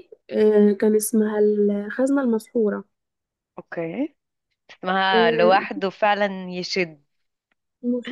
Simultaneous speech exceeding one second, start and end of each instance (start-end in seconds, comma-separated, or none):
none